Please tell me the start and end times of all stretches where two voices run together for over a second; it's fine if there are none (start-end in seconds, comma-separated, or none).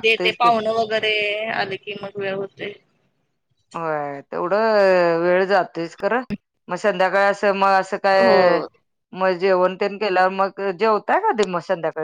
none